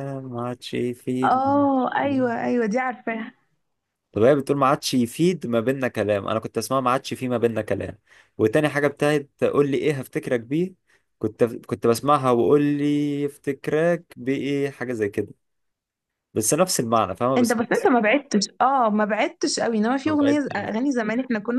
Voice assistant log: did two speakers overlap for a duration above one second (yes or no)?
no